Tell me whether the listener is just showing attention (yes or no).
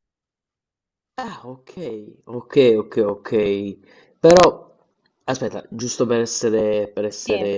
yes